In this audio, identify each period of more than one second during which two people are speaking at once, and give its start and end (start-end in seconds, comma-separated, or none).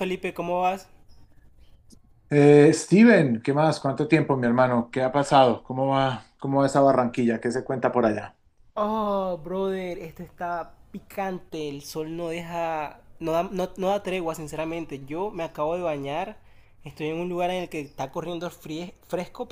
none